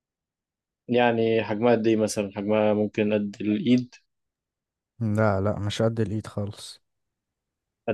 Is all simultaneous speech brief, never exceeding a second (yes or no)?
yes